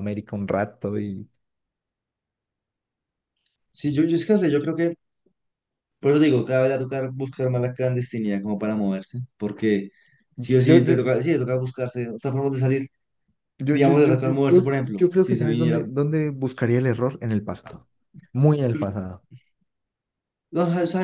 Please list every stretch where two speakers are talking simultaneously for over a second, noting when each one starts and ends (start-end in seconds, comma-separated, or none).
13.7-15.8